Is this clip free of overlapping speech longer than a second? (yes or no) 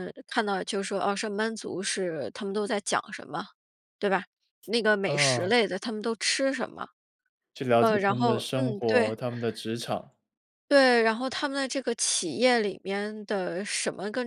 no